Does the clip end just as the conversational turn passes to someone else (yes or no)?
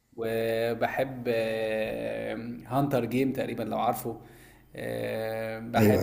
no